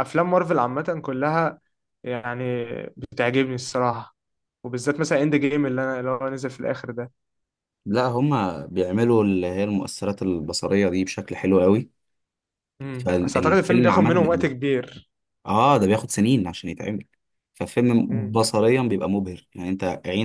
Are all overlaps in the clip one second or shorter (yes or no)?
no